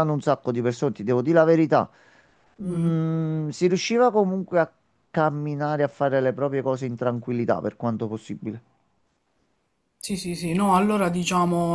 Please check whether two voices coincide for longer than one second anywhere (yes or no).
no